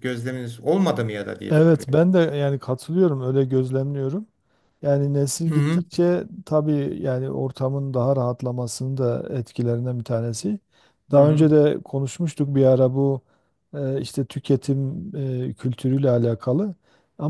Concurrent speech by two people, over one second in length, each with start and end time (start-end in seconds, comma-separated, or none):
none